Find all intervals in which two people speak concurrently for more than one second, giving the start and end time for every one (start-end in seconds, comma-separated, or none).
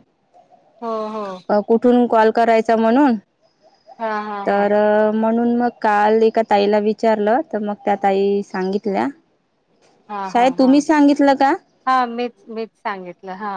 none